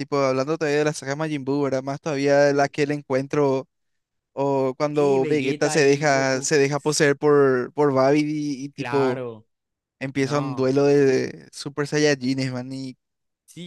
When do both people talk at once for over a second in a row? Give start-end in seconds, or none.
4.9-7.0